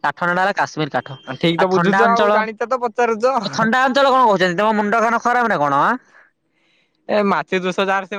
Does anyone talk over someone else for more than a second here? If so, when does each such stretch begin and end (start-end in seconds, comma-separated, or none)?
1.6-3.2